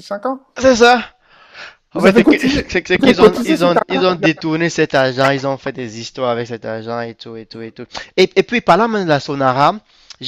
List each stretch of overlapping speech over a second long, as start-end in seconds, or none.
1.9-4.5